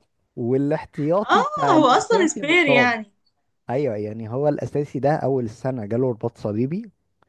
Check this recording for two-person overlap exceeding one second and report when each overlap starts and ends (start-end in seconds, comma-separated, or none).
1.3-2.9